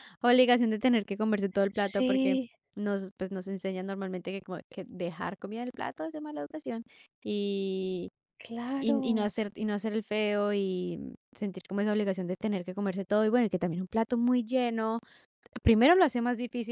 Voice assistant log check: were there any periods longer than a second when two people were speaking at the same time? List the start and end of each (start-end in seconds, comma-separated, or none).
none